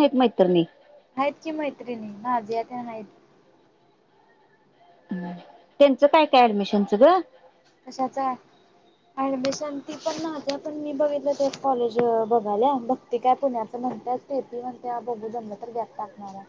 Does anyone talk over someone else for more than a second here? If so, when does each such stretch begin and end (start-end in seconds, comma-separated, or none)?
none